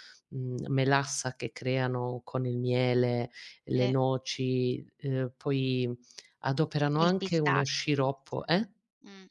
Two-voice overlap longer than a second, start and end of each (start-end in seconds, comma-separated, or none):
7.0-8.4